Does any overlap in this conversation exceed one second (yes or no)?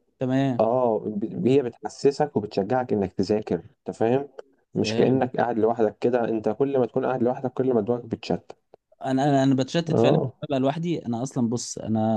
no